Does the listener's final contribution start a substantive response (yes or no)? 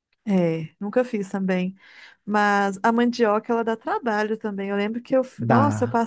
no